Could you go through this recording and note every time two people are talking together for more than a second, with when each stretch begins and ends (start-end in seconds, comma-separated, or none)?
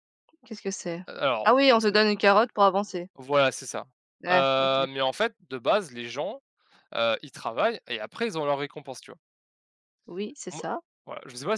none